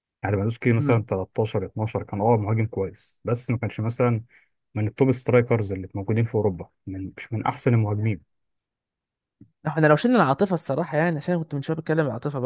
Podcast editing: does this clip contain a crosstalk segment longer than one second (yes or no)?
no